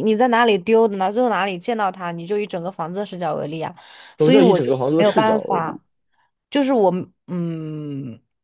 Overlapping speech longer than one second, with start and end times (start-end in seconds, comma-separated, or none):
4.2-5.8